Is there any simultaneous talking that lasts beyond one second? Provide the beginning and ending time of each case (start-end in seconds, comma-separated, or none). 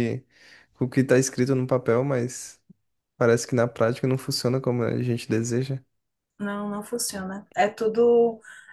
none